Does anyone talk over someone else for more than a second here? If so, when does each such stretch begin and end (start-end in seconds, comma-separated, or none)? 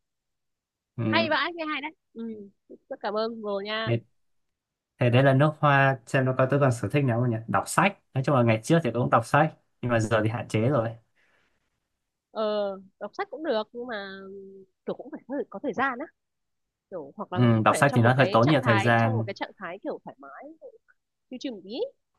17.3-19.3